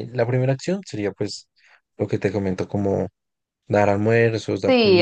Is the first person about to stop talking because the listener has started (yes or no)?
yes